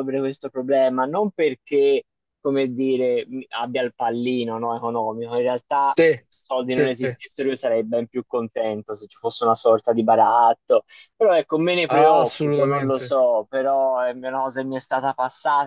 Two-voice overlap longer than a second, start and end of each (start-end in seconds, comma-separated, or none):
11.9-13.2